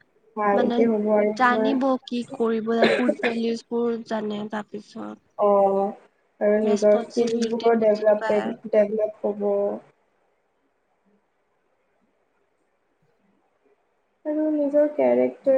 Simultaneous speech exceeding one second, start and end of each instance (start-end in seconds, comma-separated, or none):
6.7-8.5